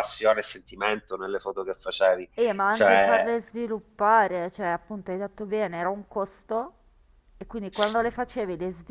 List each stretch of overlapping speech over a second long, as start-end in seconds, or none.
none